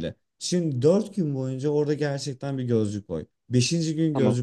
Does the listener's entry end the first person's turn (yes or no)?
no